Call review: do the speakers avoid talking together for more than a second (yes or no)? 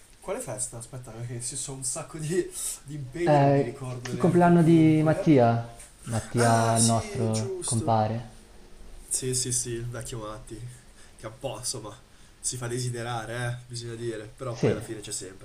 no